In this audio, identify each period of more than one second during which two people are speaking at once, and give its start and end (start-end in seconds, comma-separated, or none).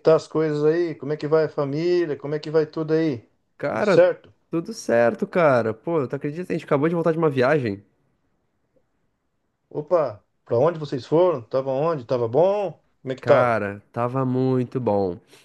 none